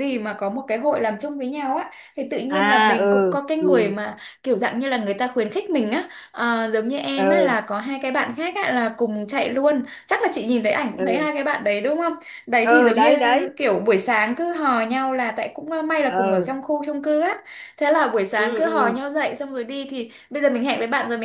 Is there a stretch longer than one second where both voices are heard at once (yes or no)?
yes